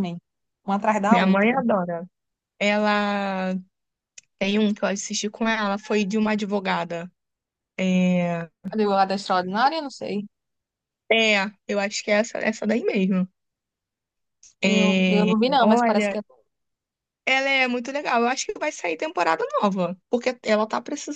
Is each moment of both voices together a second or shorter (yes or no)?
no